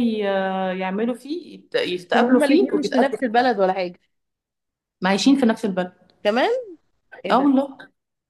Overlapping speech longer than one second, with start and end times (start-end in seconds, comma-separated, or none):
2.1-3.3